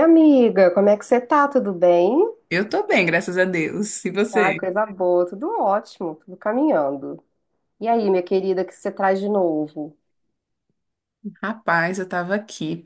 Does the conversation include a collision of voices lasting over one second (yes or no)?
no